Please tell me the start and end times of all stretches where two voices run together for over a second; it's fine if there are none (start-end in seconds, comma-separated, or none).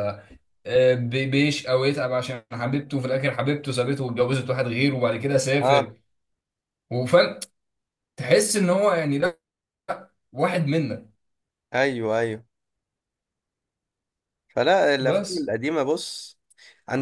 none